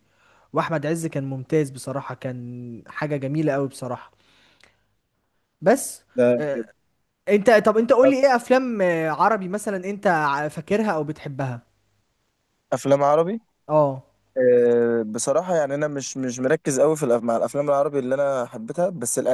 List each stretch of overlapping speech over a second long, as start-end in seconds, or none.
none